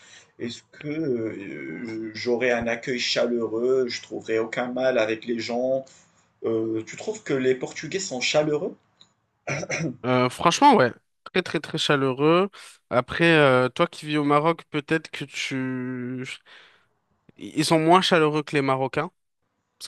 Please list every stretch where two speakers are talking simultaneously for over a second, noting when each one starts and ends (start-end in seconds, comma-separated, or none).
none